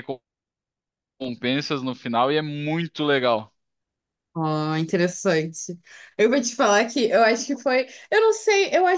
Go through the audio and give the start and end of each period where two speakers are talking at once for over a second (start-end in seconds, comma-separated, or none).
none